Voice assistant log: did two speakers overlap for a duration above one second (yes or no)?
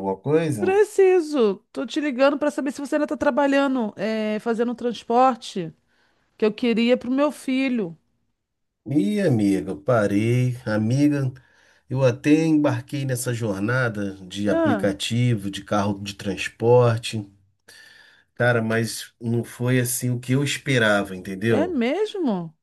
no